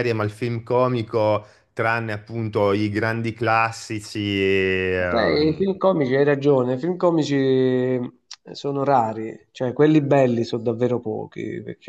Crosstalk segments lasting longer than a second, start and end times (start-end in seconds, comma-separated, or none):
none